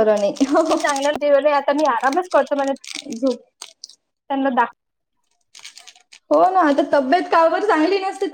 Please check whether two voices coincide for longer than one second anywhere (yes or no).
no